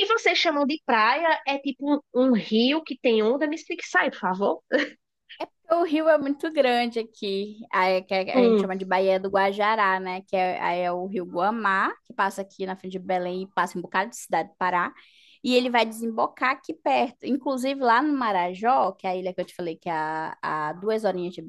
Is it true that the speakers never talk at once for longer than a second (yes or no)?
yes